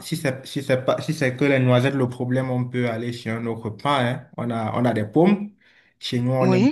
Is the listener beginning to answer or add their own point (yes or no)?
no